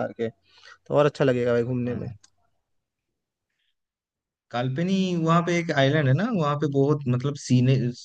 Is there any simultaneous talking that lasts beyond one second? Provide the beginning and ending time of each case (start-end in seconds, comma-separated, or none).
none